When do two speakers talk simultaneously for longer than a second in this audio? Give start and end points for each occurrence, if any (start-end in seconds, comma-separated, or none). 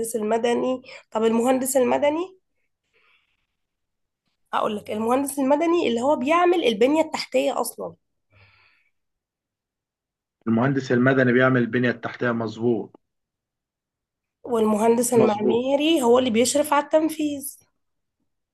none